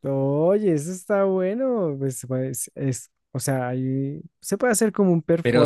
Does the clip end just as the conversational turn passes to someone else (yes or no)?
yes